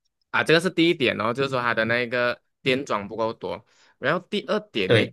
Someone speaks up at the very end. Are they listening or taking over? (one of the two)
listening